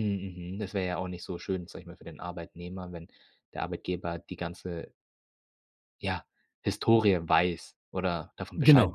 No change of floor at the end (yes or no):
no